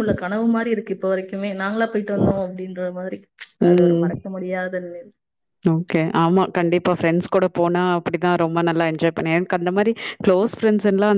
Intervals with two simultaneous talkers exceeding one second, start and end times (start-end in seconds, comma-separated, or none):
none